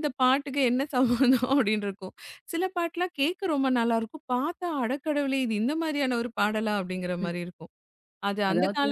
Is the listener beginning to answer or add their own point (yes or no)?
no